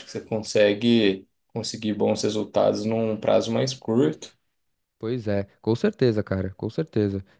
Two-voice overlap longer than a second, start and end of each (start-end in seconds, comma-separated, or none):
none